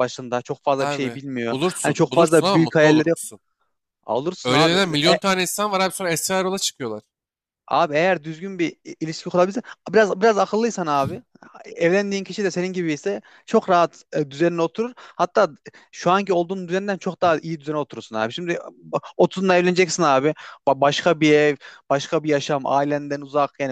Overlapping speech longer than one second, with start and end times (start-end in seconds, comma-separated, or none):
0.8-3.2